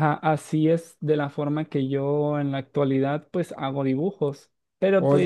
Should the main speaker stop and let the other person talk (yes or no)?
no